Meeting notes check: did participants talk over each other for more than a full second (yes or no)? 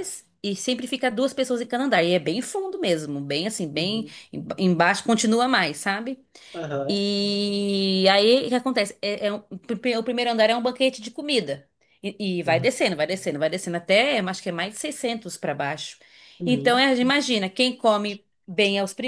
no